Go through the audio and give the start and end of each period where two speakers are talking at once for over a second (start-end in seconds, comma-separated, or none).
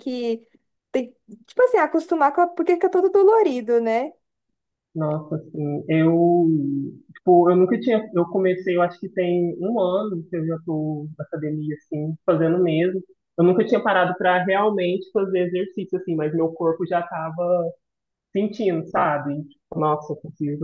none